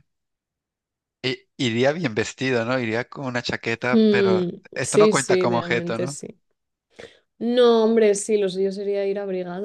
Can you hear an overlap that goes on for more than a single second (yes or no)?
yes